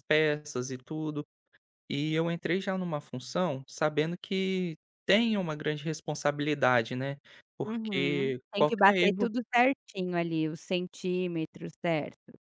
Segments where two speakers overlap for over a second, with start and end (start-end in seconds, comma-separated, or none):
7.6-9.3